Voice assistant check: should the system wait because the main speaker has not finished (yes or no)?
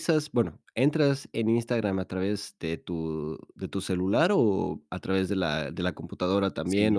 no